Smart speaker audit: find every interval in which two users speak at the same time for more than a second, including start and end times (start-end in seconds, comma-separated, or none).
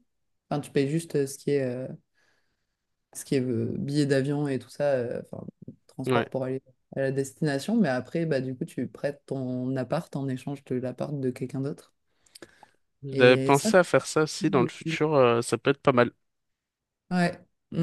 none